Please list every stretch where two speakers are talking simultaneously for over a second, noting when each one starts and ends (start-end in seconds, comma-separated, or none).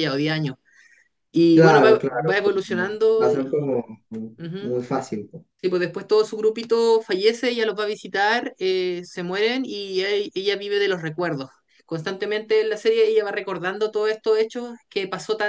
1.5-3.5